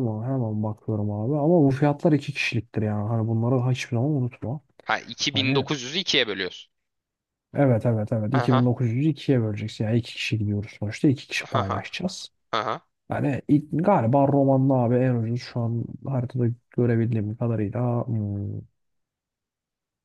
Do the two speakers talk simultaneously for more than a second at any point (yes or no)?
no